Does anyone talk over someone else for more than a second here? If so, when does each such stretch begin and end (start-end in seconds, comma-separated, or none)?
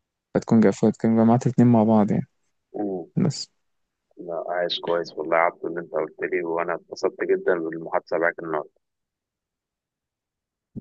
none